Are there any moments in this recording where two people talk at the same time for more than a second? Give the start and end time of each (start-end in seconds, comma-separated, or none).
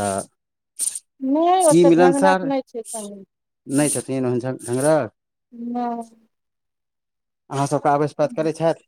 1.7-3.2